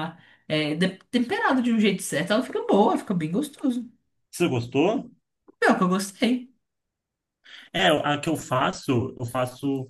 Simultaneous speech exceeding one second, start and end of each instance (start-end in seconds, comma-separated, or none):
none